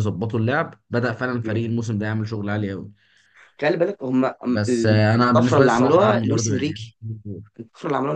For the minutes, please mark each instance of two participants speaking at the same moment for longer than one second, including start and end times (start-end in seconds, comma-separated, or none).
5.2-6.9